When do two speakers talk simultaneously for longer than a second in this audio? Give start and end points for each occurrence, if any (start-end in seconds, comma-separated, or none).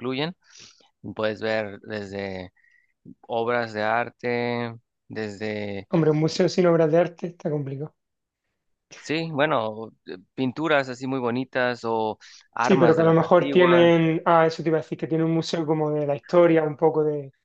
12.6-13.9